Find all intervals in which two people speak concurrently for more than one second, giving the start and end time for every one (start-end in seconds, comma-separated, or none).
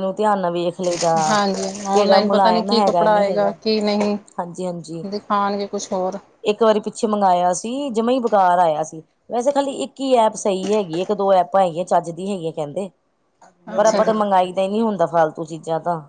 1.9-3.5